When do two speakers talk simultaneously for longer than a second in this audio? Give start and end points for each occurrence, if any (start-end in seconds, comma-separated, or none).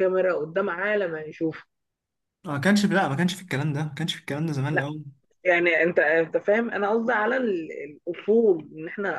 none